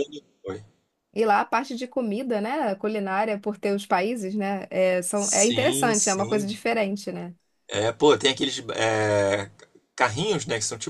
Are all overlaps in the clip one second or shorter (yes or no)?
no